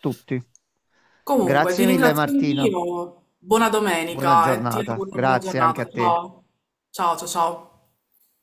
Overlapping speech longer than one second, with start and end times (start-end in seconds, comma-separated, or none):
1.4-2.7, 4.1-6.2